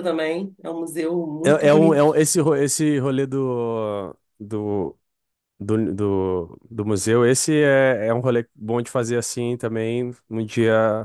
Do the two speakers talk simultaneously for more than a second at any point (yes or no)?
no